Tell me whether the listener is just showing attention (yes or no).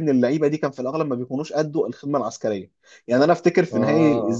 yes